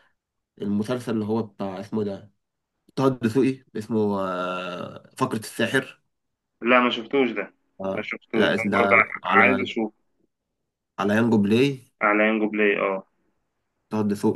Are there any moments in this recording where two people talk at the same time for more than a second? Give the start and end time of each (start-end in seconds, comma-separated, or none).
7.9-9.7